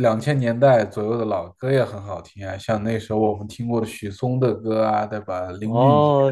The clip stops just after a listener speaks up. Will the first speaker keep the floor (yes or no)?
no